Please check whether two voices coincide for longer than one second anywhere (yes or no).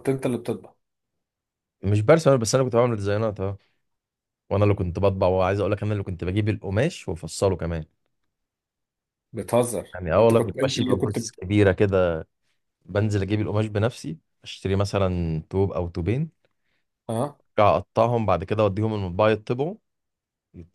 yes